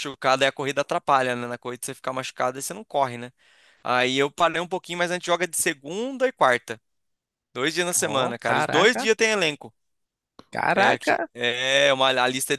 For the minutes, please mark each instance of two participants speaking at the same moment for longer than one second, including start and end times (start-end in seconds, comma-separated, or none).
7.9-9.1